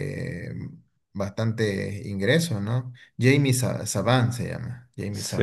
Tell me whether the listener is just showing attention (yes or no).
no